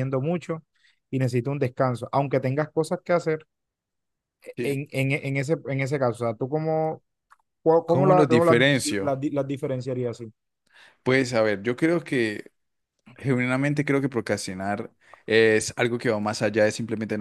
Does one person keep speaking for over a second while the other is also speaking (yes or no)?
yes